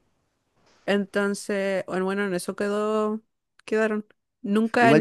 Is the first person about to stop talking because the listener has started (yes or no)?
yes